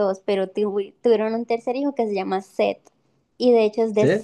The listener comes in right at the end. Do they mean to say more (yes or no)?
no